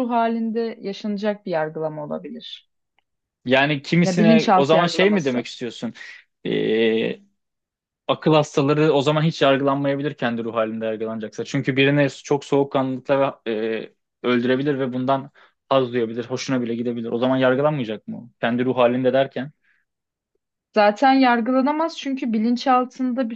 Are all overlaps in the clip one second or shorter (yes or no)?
no